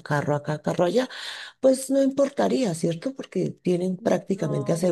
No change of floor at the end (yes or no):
yes